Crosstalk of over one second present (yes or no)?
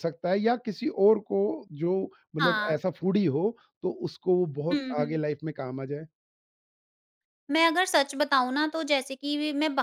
no